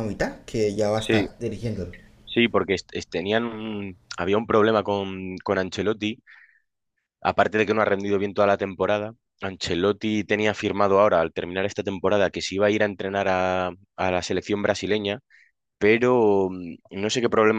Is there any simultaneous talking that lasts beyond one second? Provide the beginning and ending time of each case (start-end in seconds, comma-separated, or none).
none